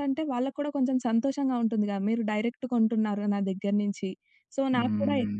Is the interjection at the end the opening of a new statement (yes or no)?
no